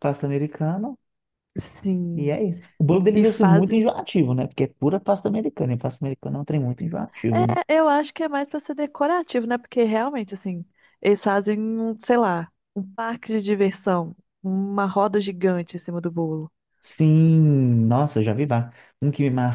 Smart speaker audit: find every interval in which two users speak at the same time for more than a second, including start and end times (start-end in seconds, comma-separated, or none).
none